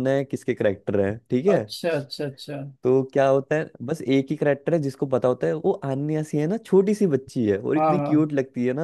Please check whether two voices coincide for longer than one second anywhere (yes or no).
no